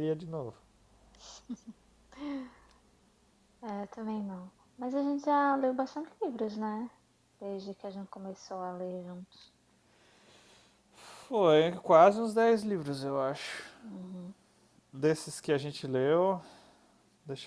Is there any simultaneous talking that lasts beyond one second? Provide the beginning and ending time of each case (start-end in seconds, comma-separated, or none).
none